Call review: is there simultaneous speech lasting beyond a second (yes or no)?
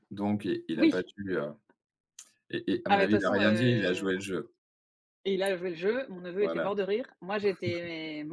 yes